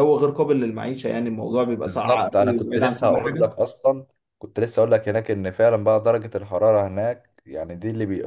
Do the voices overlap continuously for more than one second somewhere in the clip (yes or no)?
yes